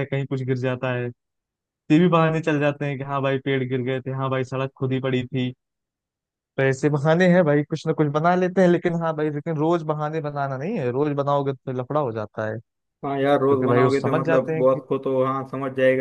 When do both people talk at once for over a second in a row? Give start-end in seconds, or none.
13.3-14.8